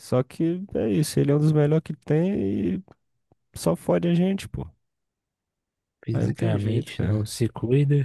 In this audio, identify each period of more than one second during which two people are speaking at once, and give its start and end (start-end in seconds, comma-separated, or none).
6.1-7.3